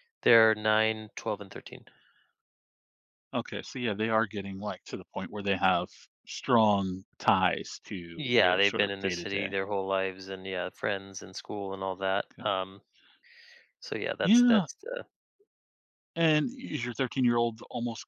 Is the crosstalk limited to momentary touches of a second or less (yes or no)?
no